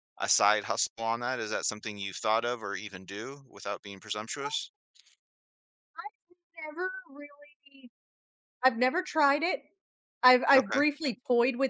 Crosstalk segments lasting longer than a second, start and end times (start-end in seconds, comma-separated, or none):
none